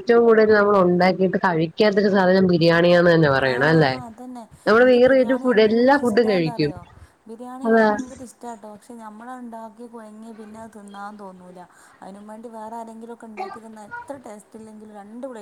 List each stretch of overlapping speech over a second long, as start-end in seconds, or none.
4.7-6.7